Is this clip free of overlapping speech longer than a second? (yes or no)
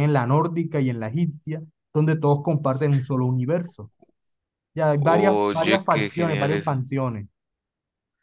no